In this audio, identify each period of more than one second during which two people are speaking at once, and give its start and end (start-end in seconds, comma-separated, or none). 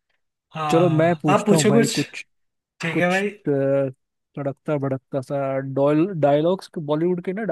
0.7-2.0